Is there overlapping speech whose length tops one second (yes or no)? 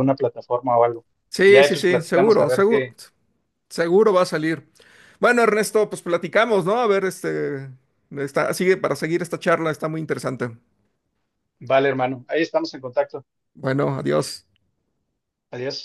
yes